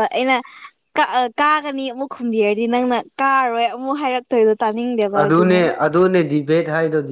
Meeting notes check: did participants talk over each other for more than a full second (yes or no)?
no